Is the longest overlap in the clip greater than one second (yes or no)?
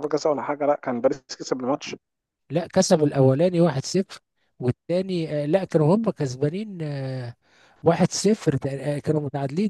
no